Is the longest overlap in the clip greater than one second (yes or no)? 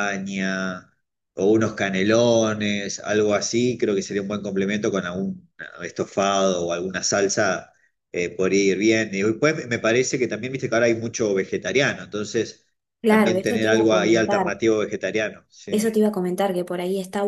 yes